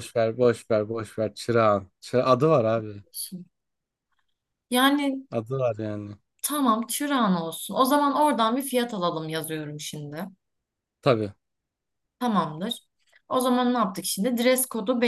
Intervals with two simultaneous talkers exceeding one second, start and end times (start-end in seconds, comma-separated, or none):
none